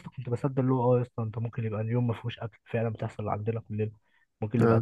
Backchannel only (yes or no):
yes